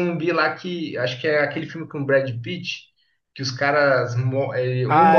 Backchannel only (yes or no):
yes